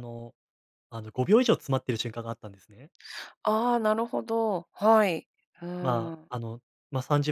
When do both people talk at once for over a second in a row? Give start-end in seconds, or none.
none